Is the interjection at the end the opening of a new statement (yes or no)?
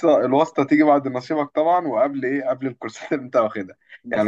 no